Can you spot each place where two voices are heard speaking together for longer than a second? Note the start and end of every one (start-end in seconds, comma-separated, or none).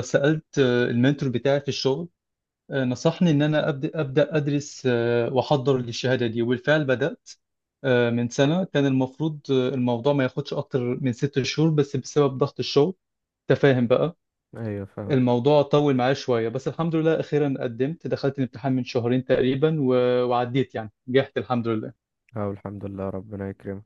none